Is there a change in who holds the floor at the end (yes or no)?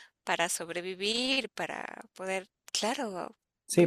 yes